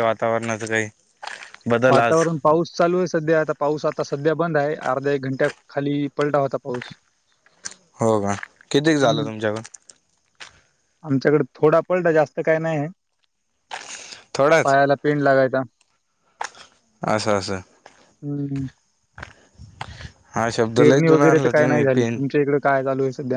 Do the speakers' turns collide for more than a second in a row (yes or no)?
yes